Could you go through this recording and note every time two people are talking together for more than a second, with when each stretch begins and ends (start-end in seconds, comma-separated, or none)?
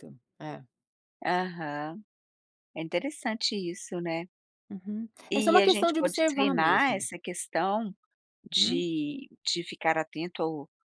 5.3-7.1